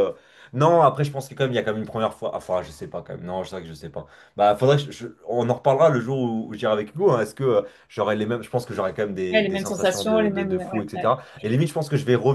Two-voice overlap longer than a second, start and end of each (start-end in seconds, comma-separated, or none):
9.3-11.1